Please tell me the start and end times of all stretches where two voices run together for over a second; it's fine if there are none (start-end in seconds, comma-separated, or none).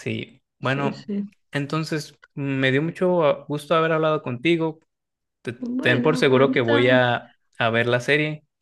5.6-7.0